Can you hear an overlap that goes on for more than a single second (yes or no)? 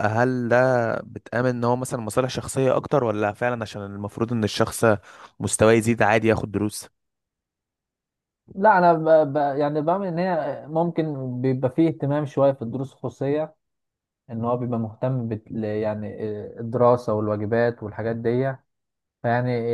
no